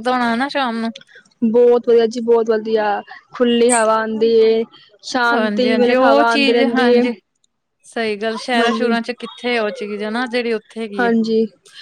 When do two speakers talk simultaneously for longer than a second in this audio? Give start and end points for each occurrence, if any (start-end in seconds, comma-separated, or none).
5.3-7.0